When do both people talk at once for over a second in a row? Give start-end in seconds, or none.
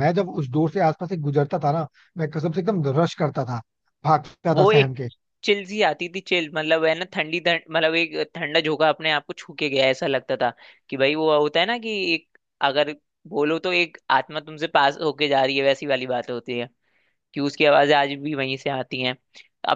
none